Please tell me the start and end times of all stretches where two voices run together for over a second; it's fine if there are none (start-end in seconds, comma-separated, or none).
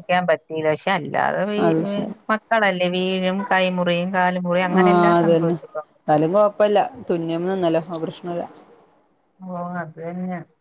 none